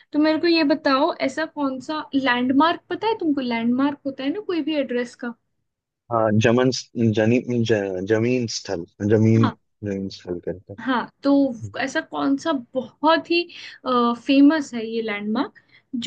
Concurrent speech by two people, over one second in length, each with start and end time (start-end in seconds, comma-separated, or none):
none